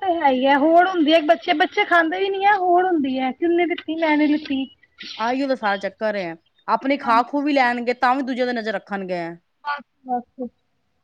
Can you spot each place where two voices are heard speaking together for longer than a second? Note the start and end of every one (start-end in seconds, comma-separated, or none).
none